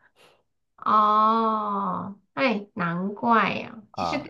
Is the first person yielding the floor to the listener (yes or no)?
no